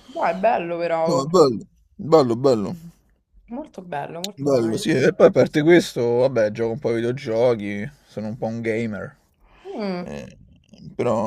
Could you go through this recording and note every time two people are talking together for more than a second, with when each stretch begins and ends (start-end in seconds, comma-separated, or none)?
none